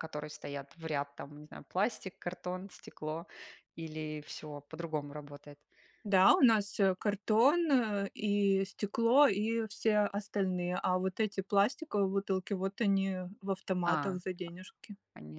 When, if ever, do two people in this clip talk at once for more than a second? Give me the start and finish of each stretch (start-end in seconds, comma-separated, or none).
none